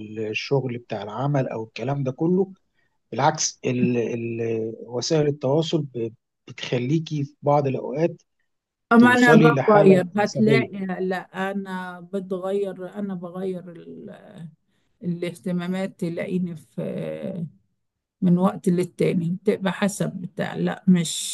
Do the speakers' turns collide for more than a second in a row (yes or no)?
yes